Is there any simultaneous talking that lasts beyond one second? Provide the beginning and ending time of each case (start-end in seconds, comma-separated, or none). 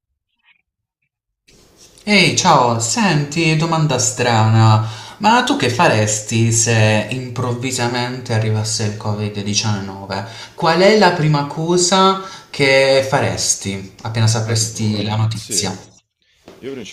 14.4-15.7